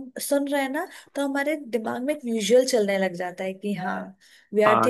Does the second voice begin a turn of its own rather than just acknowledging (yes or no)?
no